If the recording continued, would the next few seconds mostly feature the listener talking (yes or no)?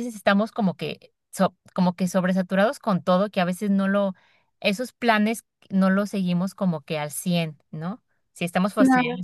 no